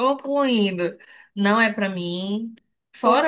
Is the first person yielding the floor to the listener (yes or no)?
no